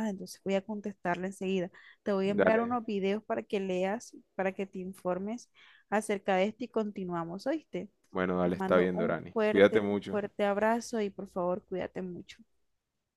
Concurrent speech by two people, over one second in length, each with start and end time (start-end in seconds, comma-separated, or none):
8.4-10.2